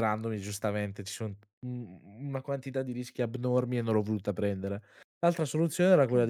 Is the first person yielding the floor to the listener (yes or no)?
no